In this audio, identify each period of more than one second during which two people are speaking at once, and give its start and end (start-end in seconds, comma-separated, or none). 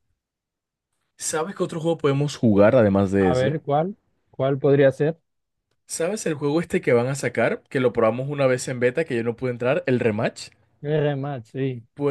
none